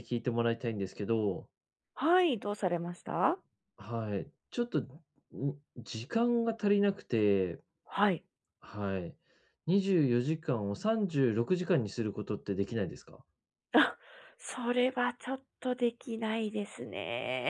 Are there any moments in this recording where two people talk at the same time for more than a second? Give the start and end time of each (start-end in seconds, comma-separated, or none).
none